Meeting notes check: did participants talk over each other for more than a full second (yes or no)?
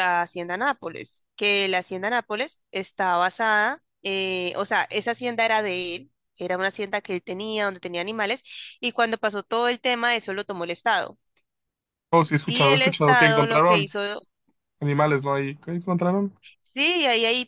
yes